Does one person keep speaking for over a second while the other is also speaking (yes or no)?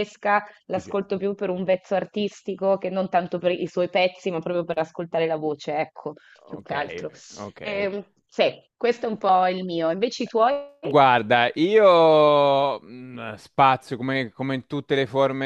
no